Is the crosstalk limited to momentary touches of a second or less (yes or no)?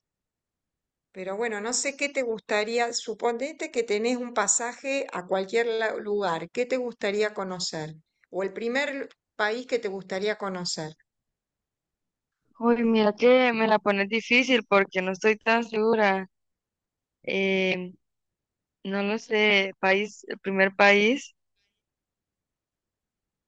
yes